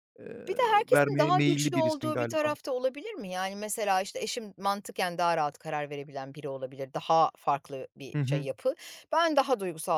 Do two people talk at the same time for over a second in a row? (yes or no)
yes